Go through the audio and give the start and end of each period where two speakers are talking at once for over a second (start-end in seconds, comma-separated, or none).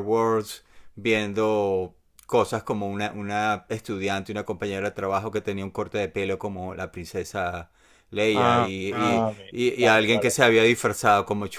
8.3-10.3